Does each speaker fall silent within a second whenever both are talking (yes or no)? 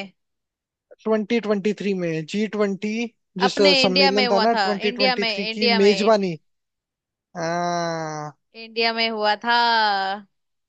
no